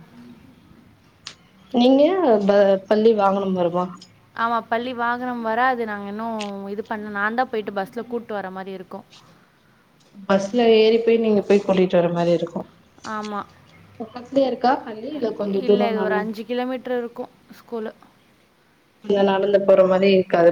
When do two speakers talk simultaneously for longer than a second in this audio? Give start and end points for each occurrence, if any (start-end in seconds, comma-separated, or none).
none